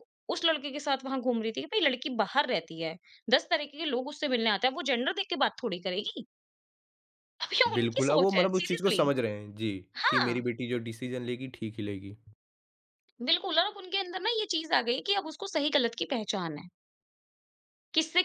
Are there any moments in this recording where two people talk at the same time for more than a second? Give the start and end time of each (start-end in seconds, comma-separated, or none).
7.8-9.0